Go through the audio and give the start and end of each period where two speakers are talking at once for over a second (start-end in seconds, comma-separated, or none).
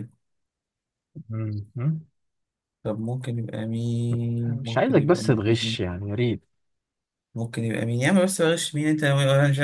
4.5-5.8